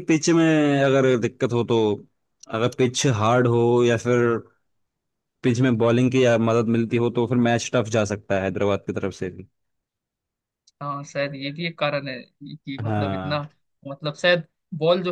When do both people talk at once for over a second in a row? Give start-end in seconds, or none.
none